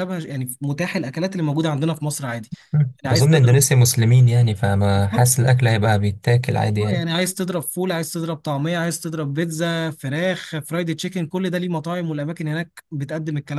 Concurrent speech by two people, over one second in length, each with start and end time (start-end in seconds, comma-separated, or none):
none